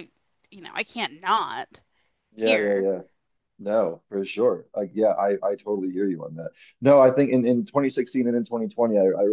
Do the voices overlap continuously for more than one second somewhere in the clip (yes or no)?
no